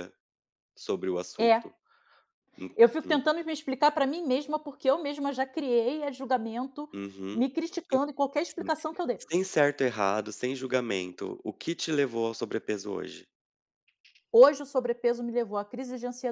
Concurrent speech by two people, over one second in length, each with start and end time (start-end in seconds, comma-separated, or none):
none